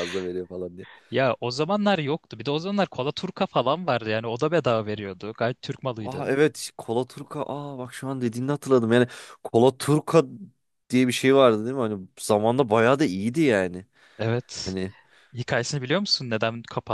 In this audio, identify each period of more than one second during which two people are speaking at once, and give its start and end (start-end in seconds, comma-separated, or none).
none